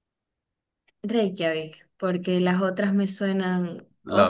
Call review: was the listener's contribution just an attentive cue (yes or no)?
yes